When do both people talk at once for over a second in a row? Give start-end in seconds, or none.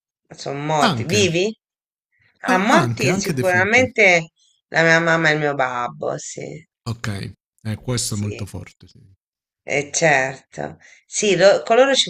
2.5-3.9